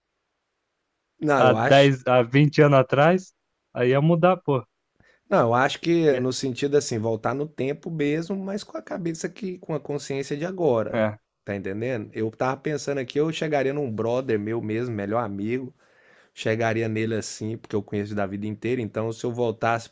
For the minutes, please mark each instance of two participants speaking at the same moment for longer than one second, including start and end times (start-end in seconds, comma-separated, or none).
none